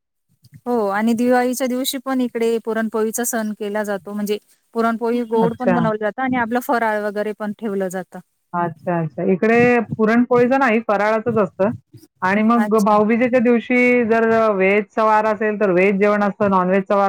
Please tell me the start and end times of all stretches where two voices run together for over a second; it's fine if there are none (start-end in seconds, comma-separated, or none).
none